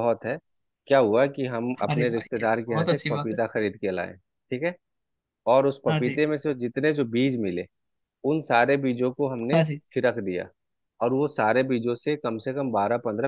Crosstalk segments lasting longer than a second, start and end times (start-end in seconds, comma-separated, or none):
1.9-3.4